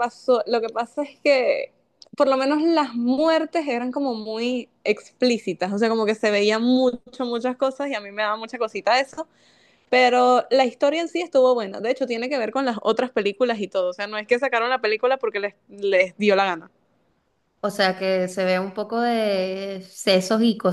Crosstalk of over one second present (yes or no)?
no